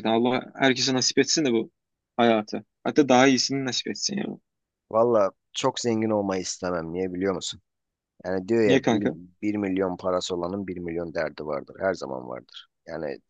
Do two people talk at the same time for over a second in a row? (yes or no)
no